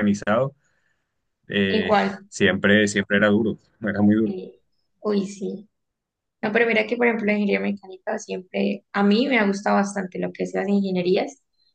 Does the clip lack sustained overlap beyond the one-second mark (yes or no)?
yes